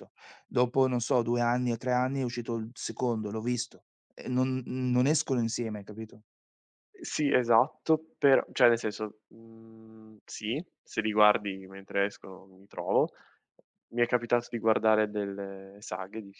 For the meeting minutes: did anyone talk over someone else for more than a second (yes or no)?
no